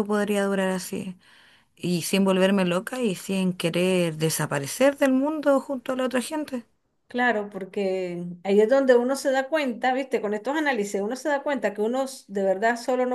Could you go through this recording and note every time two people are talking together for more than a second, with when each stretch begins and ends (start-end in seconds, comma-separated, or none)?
none